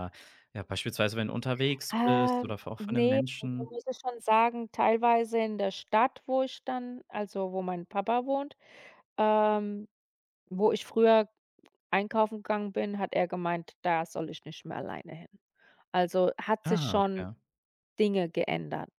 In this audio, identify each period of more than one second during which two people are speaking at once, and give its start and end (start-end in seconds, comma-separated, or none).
1.9-3.8